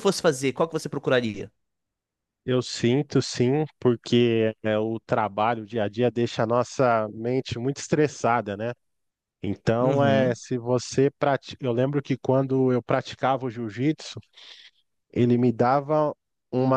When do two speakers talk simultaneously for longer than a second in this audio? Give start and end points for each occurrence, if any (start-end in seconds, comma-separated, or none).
none